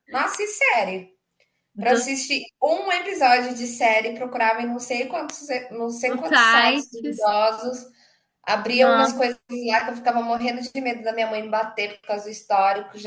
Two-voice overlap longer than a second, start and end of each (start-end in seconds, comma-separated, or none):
6.1-7.3